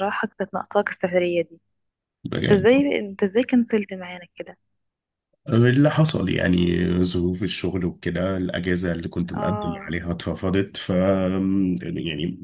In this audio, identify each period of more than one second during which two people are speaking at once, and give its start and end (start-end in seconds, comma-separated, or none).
none